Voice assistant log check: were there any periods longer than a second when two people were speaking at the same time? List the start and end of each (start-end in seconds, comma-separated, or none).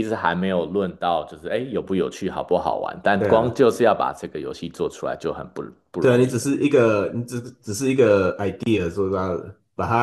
none